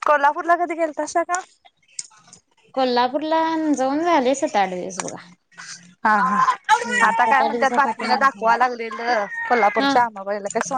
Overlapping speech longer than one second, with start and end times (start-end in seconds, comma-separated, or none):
7.1-8.5